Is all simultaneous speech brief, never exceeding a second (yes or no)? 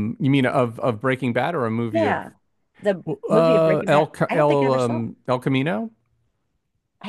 no